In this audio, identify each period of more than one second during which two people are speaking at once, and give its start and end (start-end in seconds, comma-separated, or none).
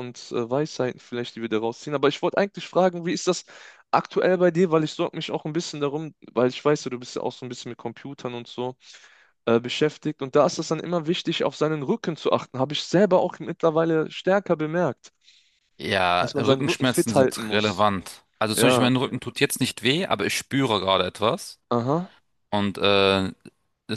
16.2-17.9